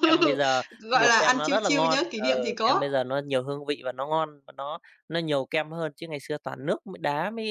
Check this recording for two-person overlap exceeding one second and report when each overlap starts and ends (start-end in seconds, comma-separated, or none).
0.8-2.9